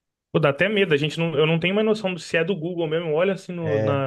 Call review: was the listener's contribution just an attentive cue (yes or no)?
yes